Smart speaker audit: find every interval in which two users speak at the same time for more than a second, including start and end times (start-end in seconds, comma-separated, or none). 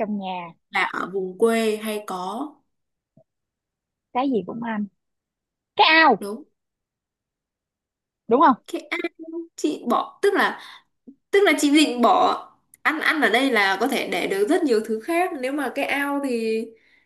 none